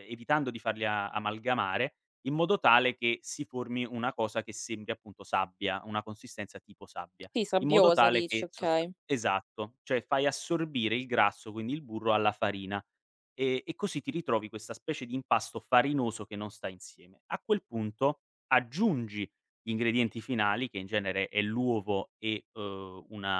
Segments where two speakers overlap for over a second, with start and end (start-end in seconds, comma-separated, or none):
7.3-8.9